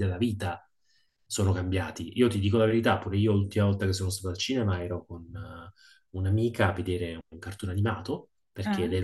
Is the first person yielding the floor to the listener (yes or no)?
no